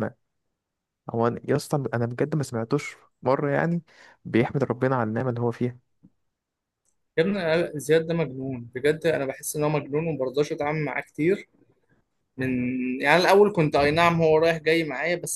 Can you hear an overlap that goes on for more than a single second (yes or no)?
no